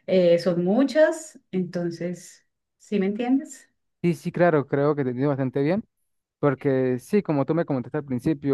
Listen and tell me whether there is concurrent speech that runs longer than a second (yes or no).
no